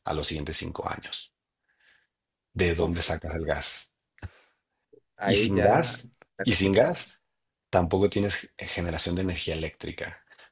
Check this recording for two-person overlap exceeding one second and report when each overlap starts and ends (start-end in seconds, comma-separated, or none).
5.2-6.9